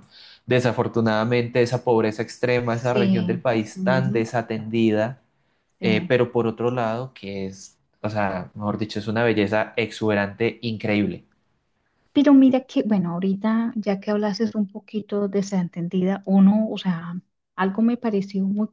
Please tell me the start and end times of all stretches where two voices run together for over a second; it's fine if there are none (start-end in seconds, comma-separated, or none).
2.7-4.3